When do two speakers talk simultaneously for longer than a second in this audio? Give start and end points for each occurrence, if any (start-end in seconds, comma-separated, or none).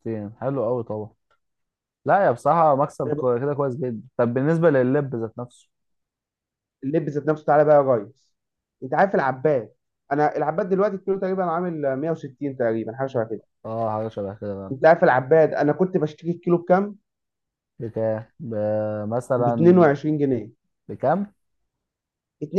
none